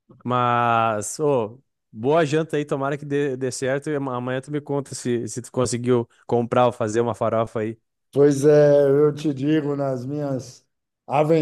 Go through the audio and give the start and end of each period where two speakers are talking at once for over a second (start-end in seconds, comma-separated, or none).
none